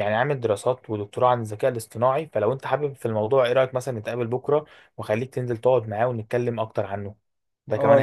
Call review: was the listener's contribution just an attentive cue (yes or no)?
no